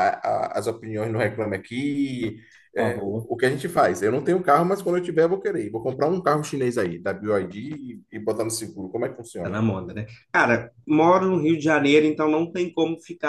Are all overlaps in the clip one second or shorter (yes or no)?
yes